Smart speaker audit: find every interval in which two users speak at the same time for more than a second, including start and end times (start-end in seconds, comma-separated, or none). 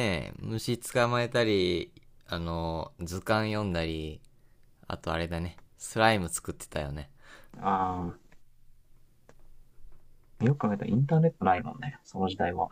none